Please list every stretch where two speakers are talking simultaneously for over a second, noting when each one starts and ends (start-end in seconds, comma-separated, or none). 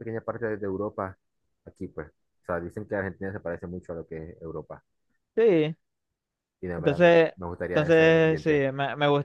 6.8-8.7